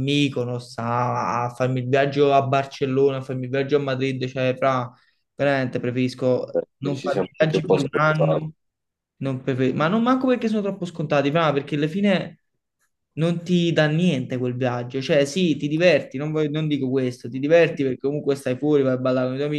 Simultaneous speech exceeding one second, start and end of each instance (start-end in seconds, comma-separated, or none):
6.5-8.4